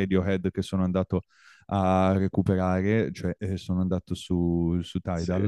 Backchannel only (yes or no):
yes